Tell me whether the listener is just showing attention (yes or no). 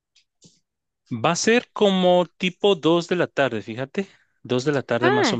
no